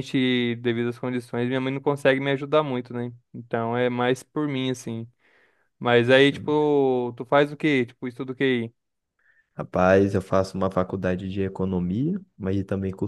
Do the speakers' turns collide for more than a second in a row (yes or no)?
no